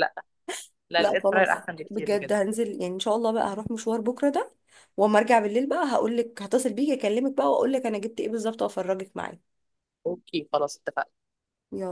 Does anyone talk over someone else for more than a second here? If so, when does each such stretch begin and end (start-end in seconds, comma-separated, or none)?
1.0-2.4